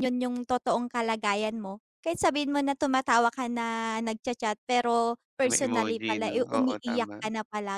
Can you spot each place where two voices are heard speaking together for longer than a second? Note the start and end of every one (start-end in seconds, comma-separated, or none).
5.5-7.2